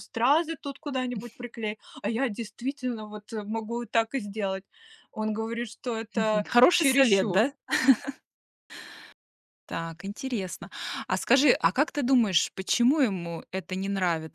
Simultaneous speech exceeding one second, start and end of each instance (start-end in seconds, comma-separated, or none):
6.1-7.5